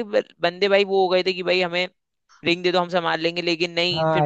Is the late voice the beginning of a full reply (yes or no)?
no